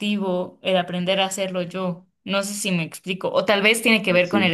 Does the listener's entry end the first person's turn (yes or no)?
no